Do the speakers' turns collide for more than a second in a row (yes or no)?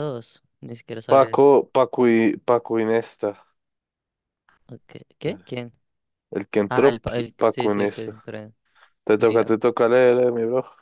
yes